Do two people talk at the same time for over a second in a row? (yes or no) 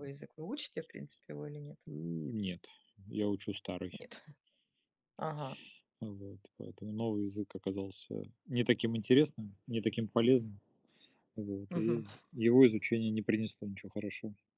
no